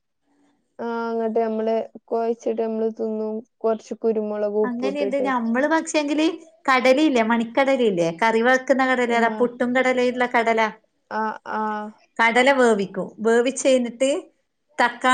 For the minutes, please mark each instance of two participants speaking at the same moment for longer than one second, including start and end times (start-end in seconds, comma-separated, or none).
none